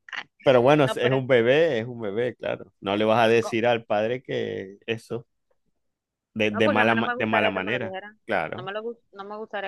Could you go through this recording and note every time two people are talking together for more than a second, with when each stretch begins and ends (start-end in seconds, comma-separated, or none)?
6.5-8.7